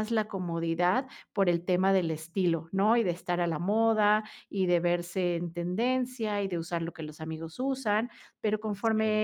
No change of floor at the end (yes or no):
yes